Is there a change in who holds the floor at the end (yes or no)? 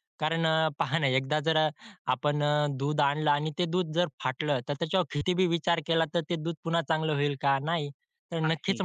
no